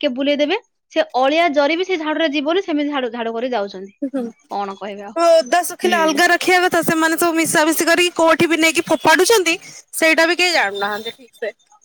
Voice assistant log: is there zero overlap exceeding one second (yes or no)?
yes